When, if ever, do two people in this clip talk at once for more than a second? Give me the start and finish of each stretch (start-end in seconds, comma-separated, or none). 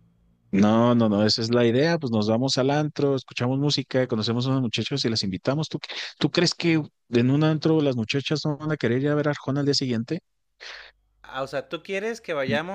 none